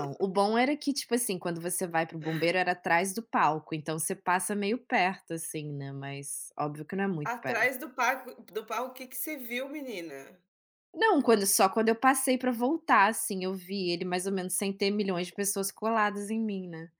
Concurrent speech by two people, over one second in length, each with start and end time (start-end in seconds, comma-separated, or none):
none